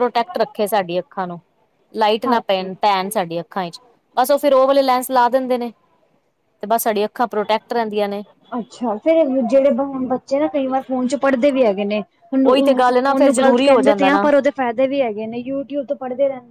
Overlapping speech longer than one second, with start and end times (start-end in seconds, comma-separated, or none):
12.4-14.3